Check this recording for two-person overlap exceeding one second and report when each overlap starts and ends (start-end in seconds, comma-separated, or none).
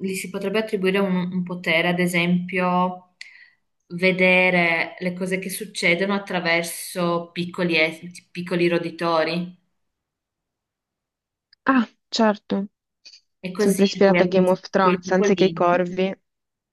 13.6-15.7